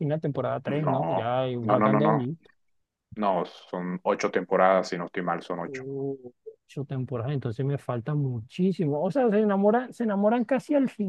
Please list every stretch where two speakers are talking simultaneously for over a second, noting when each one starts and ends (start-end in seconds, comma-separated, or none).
0.7-2.2